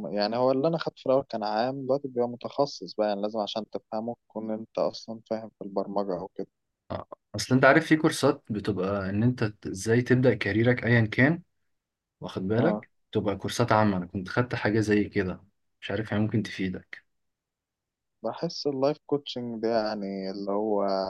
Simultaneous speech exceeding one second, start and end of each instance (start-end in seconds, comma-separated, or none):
none